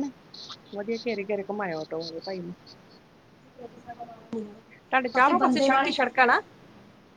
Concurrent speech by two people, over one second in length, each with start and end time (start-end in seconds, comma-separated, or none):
4.8-6.4